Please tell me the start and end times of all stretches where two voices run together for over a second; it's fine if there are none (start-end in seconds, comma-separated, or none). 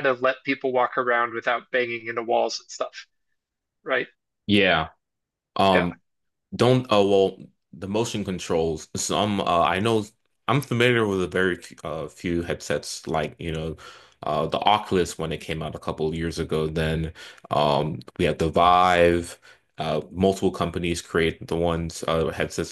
none